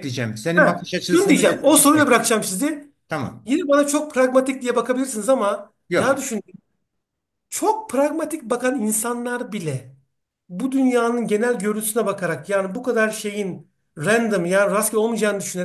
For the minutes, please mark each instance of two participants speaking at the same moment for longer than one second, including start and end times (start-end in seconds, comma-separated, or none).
0.5-2.1